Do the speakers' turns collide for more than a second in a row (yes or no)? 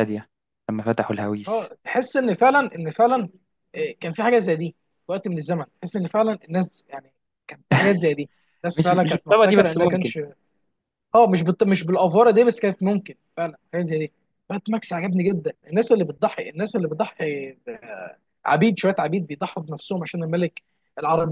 yes